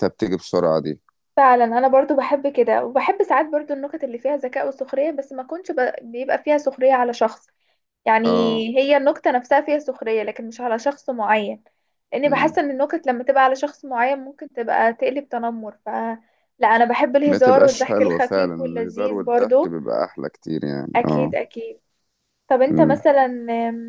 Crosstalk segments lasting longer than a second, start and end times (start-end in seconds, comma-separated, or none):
17.2-19.8